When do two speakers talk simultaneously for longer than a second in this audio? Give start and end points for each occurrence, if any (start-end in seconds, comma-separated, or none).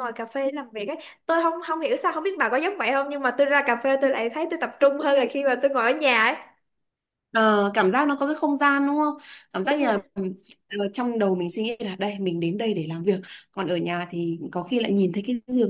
none